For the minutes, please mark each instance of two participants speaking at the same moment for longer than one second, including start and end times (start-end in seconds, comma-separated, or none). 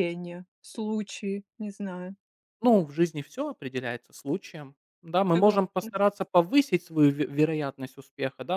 none